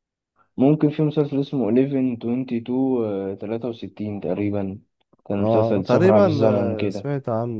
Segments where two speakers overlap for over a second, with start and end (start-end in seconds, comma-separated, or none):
5.4-7.1